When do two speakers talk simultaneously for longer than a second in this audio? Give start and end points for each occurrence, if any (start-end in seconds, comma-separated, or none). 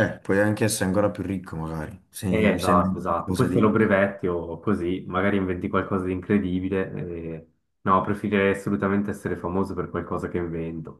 2.3-3.7